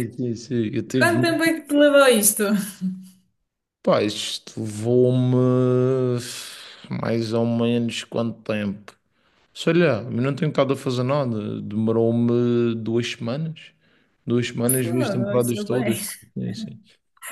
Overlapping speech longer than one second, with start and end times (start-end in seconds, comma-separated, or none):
14.7-15.9